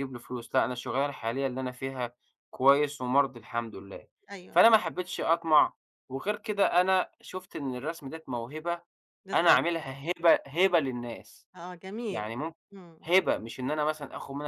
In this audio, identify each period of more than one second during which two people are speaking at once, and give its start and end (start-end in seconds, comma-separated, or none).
none